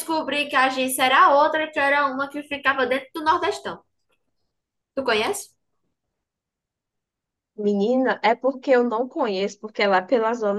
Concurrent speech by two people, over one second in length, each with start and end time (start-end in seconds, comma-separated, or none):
none